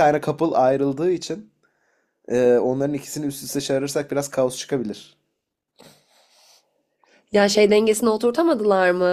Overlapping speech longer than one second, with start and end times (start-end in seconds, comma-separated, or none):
none